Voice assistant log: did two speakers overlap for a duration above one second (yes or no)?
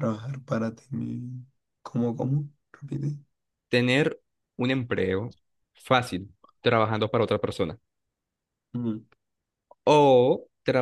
no